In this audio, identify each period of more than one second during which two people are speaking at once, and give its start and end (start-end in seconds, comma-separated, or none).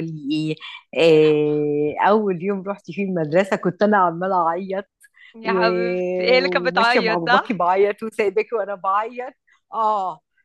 5.4-7.6